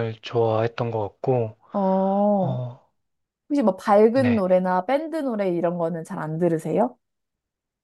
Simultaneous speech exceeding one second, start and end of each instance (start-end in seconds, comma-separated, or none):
none